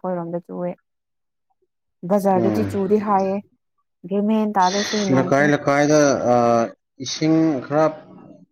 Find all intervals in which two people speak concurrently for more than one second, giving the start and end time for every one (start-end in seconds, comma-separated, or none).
none